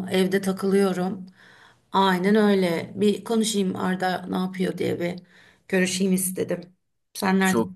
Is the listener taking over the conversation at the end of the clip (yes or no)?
yes